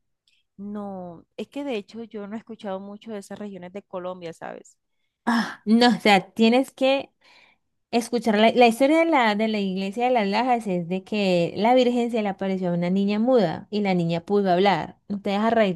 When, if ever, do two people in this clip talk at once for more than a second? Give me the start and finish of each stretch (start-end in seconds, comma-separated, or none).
none